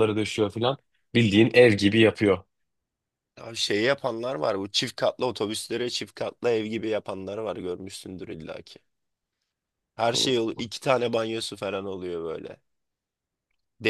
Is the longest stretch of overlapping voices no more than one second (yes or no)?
yes